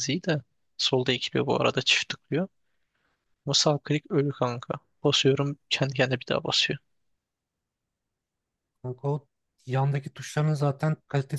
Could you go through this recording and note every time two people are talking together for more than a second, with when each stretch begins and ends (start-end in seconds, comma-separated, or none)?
none